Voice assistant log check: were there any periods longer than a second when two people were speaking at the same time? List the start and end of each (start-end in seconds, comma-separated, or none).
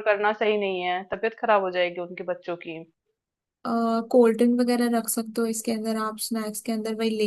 none